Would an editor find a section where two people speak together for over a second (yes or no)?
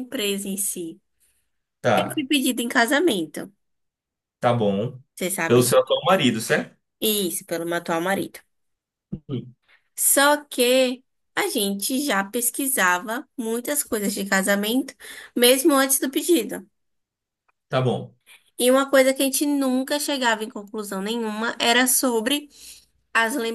no